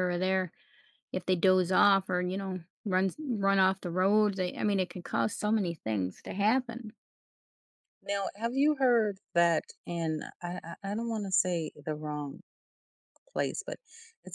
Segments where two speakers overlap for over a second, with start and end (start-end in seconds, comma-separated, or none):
none